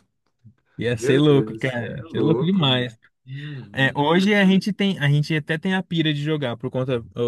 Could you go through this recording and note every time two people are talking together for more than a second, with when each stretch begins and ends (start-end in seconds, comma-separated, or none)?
1.0-3.0